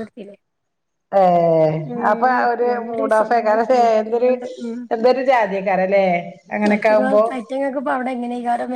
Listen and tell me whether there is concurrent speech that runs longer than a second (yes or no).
yes